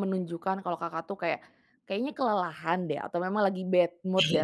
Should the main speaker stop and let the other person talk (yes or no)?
no